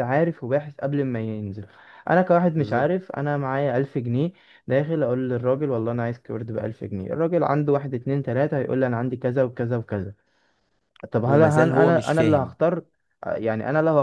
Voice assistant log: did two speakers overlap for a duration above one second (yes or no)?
yes